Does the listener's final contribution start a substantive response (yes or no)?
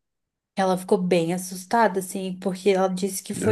no